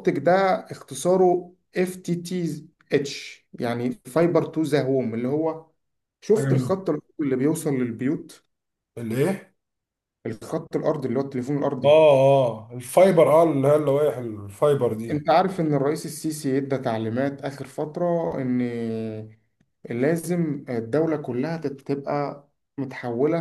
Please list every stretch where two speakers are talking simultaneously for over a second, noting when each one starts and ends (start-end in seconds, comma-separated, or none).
none